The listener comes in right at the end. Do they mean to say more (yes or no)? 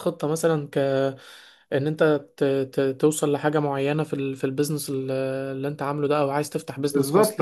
yes